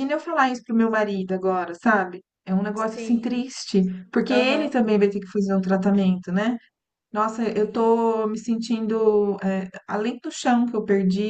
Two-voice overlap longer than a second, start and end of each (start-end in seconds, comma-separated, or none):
none